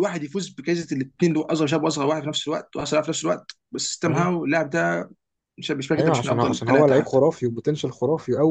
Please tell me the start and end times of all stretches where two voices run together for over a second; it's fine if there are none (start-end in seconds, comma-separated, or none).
6.0-7.2